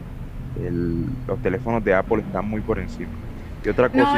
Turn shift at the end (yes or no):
no